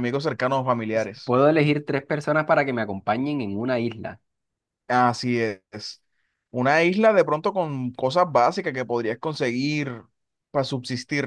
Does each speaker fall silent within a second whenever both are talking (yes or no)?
yes